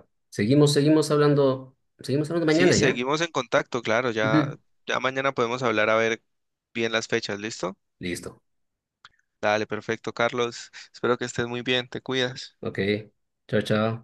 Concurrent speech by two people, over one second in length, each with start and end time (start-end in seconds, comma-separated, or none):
none